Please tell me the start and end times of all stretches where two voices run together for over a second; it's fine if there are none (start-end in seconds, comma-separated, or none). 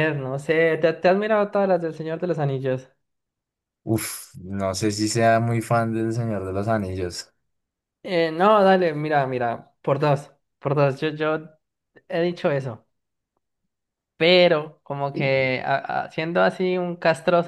none